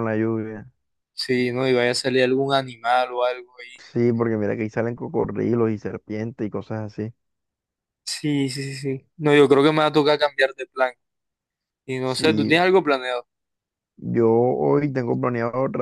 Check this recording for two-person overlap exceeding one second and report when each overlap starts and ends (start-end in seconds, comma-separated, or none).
none